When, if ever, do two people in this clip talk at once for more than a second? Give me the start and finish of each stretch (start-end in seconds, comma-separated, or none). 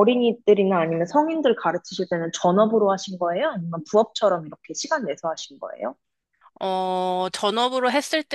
none